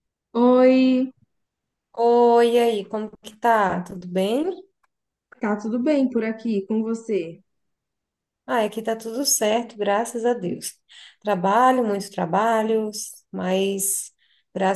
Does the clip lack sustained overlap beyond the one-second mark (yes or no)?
yes